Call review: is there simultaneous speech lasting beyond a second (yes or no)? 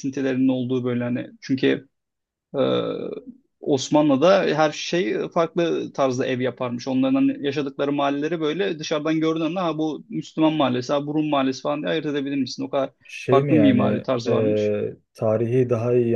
yes